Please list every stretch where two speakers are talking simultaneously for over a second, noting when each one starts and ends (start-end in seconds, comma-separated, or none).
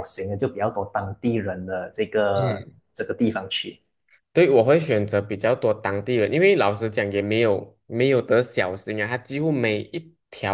none